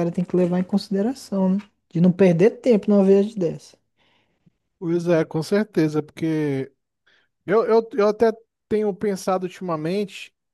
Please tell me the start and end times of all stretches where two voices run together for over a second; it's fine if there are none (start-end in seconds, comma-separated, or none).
none